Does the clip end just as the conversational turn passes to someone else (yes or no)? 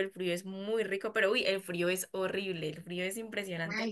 yes